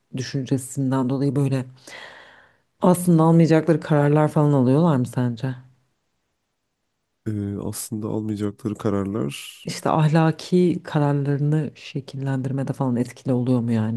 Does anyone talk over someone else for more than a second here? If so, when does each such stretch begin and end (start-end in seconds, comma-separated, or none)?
none